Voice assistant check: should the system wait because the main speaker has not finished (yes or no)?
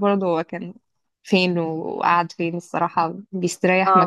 no